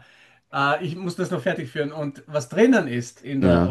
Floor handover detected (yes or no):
no